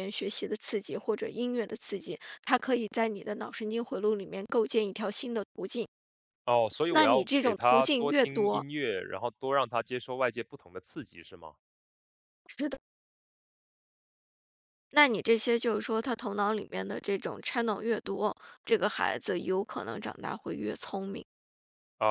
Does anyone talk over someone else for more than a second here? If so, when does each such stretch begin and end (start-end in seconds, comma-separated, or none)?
6.9-8.7